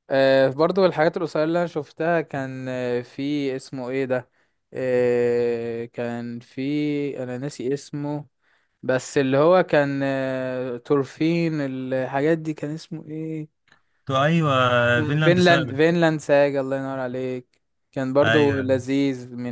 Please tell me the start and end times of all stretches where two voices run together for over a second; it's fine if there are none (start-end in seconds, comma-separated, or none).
none